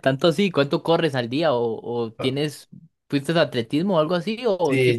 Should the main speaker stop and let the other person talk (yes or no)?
yes